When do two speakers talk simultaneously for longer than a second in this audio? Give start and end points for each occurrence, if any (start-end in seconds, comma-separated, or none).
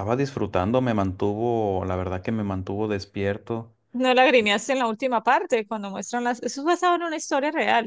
none